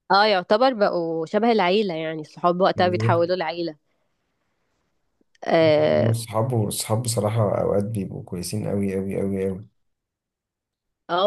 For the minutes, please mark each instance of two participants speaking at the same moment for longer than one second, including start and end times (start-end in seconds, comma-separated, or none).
none